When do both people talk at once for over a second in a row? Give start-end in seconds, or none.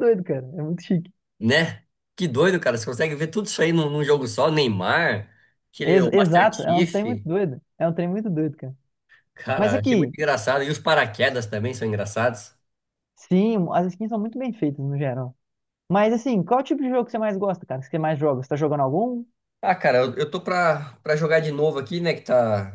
5.8-7.0